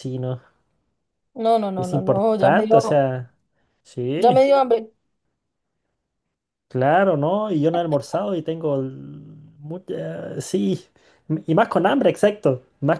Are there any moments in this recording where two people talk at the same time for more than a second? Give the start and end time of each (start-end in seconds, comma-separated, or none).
1.8-3.1